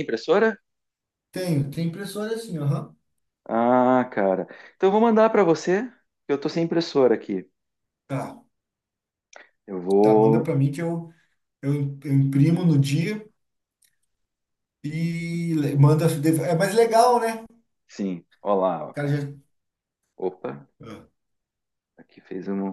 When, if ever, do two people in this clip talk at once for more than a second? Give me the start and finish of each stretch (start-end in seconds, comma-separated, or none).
none